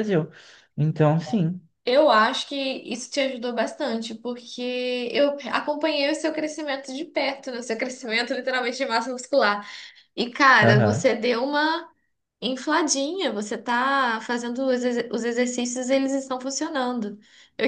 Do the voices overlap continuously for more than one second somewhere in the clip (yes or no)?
no